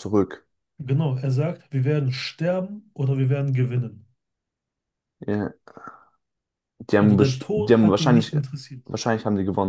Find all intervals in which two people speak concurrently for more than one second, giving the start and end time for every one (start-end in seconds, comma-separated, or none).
7.0-8.3